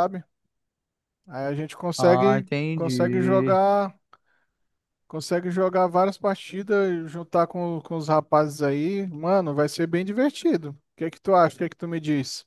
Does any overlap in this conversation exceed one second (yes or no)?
yes